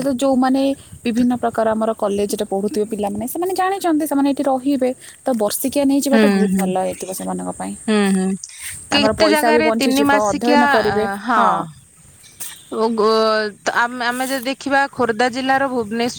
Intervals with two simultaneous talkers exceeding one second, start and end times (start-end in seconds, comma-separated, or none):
8.9-10.7